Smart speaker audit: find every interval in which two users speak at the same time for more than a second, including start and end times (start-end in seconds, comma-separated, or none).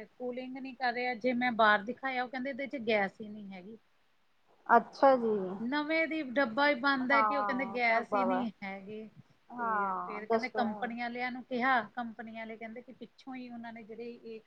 7.1-8.4, 9.6-10.9